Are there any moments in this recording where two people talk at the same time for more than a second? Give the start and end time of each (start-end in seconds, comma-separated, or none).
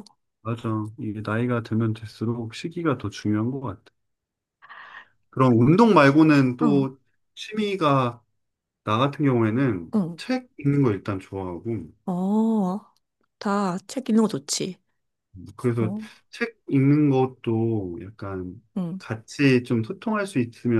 none